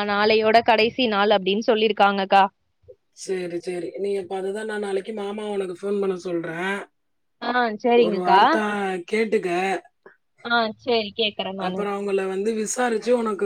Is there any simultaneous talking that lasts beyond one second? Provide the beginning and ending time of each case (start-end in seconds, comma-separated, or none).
none